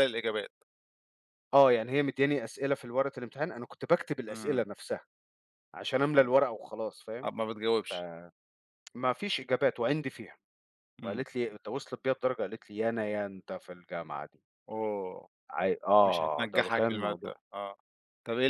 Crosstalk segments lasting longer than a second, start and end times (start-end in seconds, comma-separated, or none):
16.0-17.4